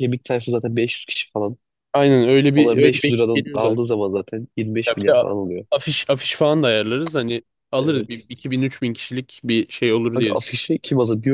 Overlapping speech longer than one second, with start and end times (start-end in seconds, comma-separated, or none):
2.5-3.9